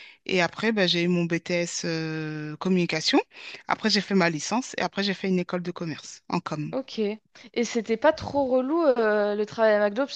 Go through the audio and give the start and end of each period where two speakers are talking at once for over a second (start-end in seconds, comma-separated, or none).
none